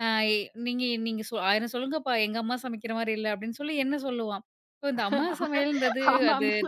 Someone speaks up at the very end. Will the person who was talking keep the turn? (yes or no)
yes